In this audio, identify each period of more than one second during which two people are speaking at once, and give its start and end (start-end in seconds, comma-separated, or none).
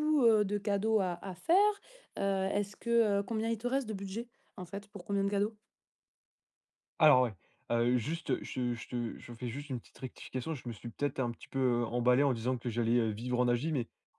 none